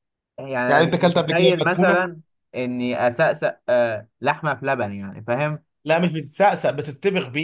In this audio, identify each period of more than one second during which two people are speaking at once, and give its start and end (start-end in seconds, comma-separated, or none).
0.7-2.1